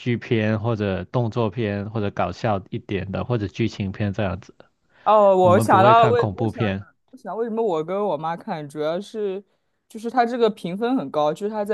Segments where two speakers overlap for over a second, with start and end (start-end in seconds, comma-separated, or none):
5.4-6.8